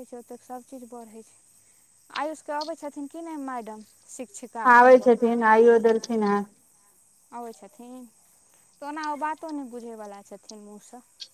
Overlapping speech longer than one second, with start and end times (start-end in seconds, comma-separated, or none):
none